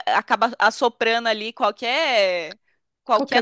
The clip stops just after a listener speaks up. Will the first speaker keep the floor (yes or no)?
yes